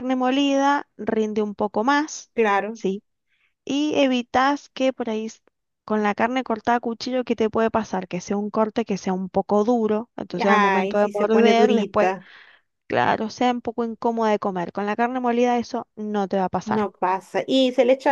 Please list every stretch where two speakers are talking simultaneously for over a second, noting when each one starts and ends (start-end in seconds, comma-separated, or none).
10.4-12.1